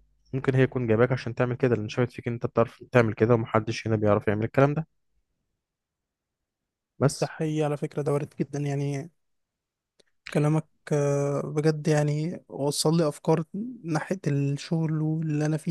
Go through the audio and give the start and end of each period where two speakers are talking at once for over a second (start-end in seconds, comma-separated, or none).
none